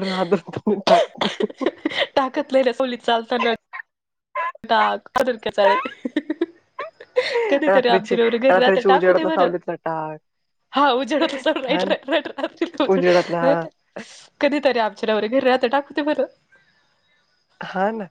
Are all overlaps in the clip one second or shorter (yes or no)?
no